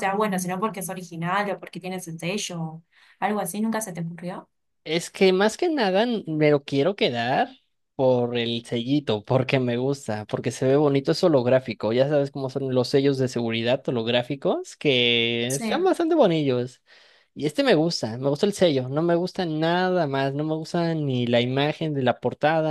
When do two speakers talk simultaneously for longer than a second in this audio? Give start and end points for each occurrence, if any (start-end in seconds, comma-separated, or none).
none